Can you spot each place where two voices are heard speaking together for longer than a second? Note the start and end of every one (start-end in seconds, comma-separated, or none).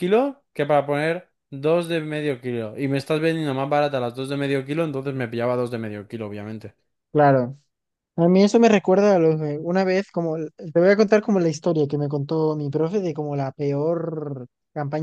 none